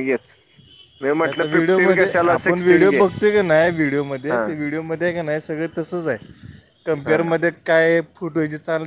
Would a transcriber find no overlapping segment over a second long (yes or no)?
no